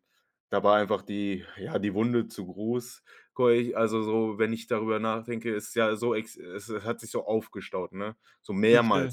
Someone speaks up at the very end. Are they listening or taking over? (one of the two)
listening